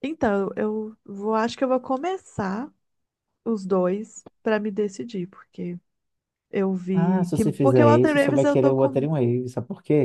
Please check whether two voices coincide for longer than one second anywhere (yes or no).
yes